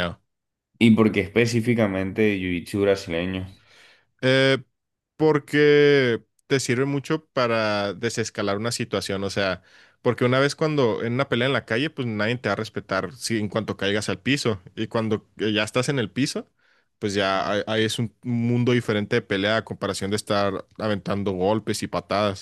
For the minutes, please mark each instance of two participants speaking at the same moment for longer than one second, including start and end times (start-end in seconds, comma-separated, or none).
none